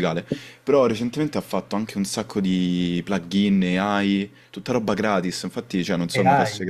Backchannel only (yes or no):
yes